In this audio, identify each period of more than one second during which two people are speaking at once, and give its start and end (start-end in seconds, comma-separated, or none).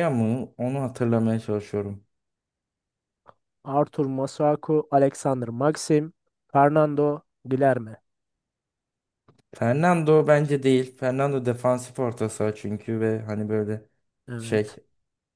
none